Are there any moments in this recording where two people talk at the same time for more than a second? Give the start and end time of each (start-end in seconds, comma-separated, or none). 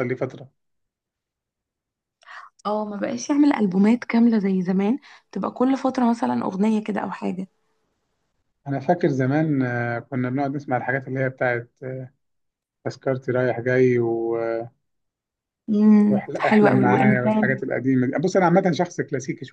16.1-17.6